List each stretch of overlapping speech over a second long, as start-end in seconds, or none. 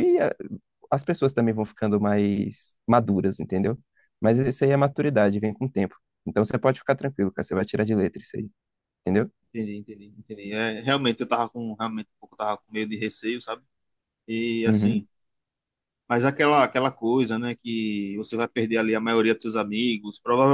none